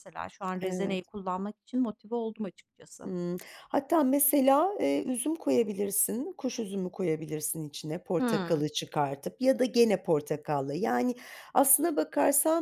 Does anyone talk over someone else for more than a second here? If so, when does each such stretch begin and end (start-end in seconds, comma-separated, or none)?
none